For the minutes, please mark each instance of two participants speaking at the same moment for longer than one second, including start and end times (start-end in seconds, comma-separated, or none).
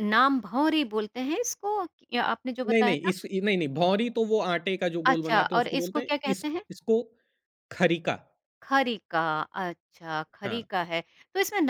5.0-6.6